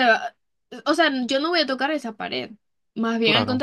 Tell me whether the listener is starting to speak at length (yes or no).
no